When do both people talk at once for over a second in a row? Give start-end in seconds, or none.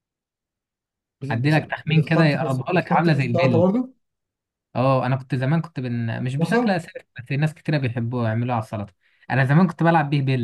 1.3-3.7